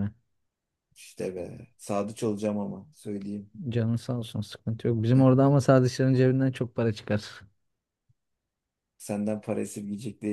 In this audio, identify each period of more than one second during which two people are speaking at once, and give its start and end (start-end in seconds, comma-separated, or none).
none